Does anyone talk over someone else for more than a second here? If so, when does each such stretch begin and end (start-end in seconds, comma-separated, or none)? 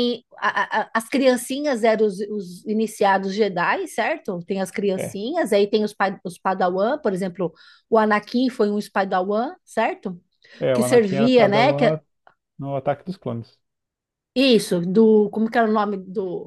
10.7-12.0